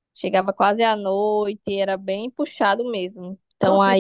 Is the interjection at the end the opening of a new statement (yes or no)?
no